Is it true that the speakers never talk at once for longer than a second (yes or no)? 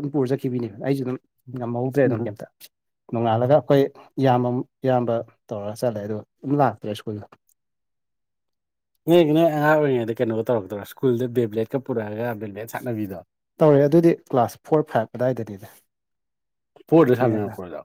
yes